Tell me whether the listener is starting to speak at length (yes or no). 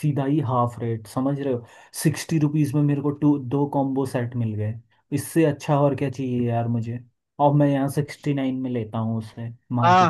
yes